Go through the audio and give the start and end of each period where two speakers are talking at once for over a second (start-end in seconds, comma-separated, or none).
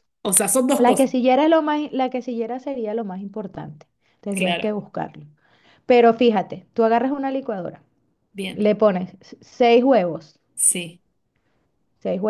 none